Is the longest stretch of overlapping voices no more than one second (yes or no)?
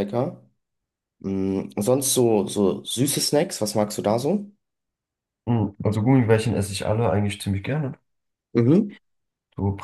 yes